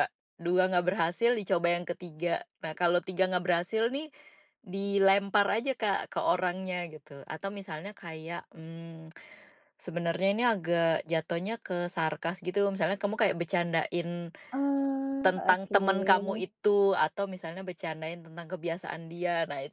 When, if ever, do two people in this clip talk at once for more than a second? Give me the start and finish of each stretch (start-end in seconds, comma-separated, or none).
15.2-16.4